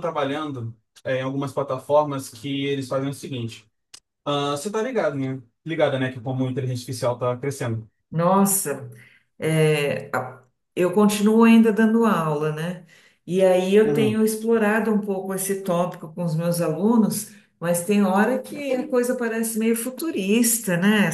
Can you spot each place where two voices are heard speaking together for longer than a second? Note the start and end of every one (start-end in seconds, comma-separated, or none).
none